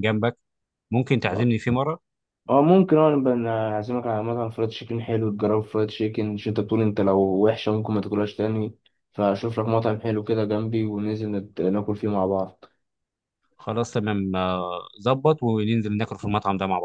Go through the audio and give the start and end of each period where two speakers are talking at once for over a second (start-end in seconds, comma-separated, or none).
none